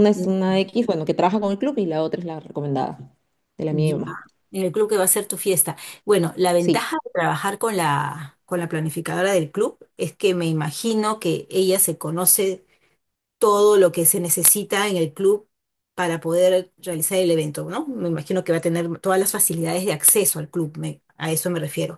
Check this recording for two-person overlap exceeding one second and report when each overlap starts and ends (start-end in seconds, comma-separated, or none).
none